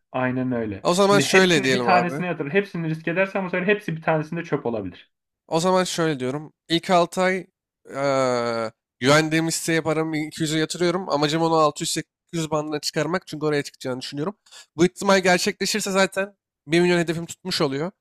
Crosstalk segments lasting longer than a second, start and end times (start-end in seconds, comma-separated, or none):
0.8-2.2